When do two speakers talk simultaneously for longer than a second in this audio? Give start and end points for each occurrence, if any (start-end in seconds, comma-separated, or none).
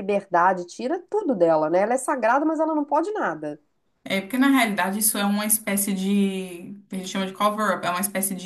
none